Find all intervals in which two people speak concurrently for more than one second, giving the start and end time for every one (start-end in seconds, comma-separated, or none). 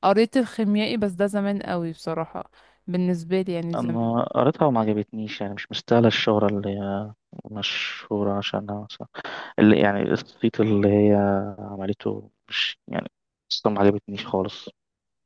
none